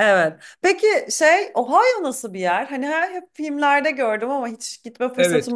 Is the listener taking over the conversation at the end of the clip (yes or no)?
yes